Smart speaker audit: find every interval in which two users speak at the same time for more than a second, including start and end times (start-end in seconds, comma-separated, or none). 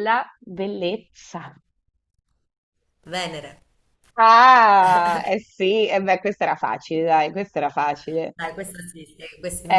none